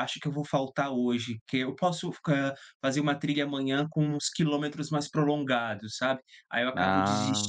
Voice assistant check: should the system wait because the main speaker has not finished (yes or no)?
yes